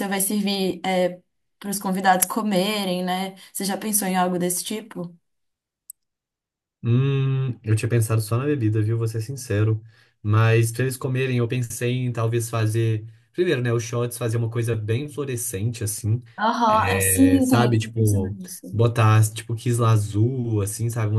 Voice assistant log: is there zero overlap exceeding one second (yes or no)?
no